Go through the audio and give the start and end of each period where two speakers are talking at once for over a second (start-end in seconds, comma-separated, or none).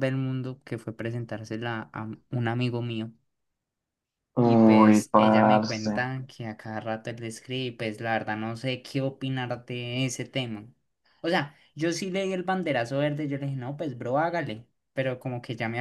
4.4-5.9